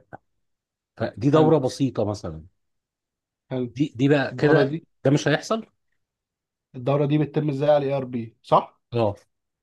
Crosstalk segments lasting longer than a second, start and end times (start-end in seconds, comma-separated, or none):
none